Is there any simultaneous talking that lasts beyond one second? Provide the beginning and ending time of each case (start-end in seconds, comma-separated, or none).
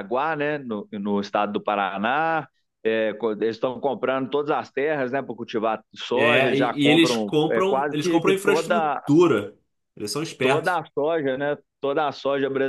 6.1-9.0